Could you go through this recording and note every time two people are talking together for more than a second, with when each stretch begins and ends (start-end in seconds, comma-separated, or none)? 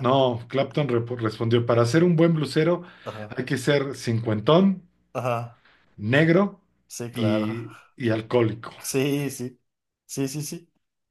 none